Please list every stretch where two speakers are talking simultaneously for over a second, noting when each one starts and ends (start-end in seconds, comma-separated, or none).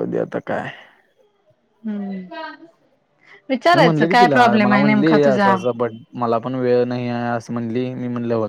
3.8-5.5